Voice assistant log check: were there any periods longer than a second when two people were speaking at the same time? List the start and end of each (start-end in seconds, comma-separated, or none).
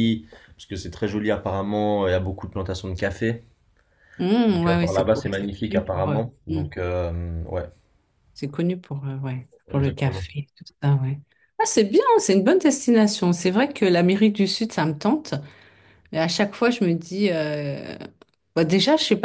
4.5-6.2